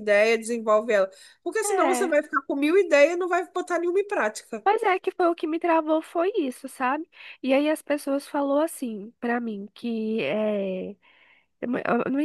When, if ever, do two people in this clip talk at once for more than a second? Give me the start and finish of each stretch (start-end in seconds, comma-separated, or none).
none